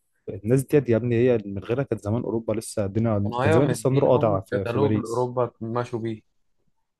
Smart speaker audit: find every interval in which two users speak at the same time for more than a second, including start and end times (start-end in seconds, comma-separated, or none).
3.2-5.3